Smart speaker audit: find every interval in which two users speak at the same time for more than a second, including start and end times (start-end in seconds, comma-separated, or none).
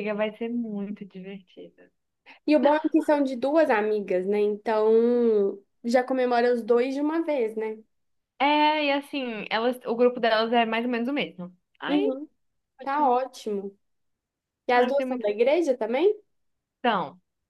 none